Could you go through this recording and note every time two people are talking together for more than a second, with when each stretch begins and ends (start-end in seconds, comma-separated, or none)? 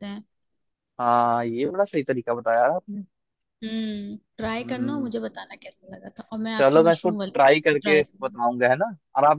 6.5-8.3